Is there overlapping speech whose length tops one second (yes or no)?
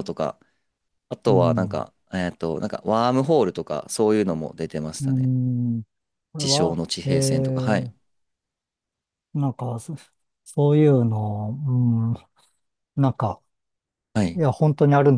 yes